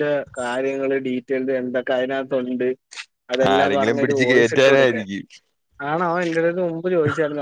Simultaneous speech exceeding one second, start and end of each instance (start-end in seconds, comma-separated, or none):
3.5-5.0